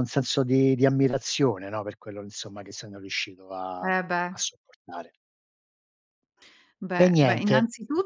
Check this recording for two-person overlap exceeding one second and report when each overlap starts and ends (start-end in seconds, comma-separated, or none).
none